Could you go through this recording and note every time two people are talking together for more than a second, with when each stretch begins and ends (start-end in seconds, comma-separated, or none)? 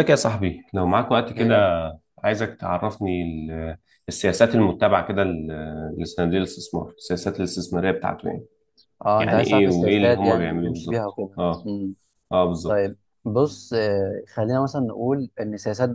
9.2-11.7